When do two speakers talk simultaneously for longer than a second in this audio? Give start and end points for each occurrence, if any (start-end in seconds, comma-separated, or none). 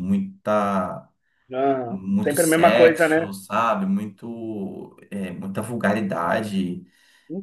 1.9-3.3